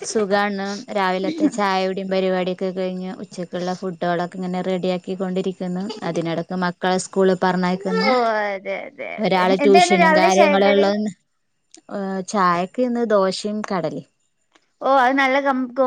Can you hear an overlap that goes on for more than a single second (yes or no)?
yes